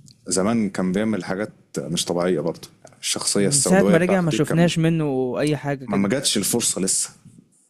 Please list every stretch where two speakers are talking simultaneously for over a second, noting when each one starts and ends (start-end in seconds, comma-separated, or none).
3.4-4.7